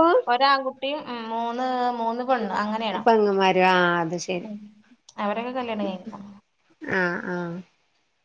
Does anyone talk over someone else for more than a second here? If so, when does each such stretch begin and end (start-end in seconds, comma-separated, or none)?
none